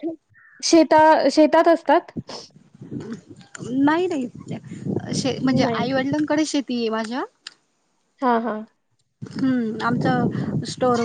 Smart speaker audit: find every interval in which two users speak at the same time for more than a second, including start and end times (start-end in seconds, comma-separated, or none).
none